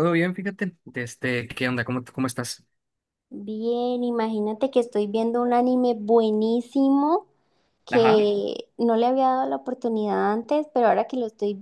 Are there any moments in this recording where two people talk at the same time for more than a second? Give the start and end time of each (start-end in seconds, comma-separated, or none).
none